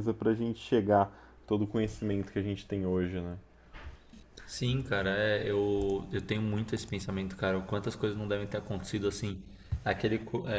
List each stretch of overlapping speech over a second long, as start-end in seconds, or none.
none